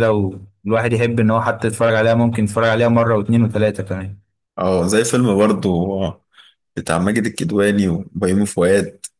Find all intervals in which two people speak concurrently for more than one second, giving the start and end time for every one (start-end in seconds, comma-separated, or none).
none